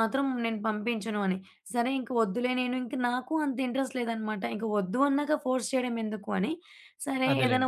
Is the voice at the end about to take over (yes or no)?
no